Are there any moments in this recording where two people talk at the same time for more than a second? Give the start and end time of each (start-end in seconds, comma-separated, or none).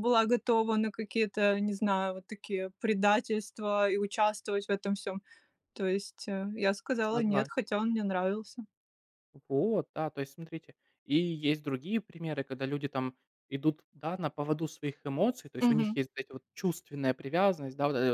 none